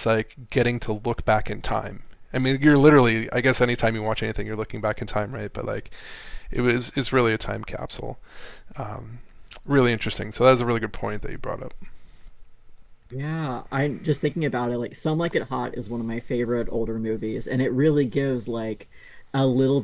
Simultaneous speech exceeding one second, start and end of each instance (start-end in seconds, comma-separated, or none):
none